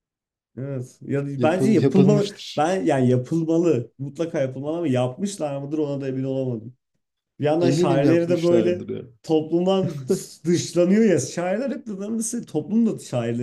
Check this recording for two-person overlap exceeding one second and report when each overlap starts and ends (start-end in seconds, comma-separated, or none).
1.4-2.7, 7.6-8.8